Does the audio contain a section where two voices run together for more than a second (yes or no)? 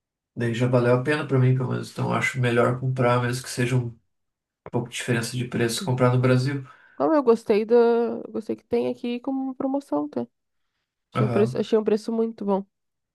no